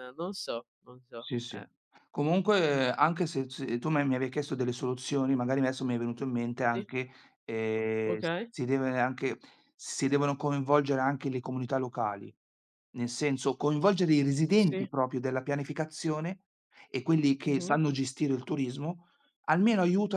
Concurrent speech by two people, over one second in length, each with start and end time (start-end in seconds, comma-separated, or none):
none